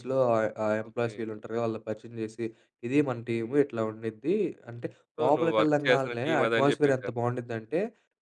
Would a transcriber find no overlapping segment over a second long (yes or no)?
no